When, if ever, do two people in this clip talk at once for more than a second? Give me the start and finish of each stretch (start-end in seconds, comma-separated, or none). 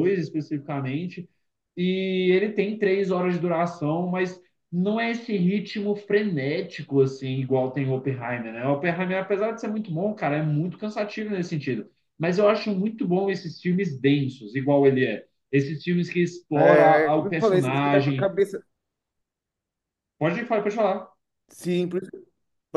16.6-18.3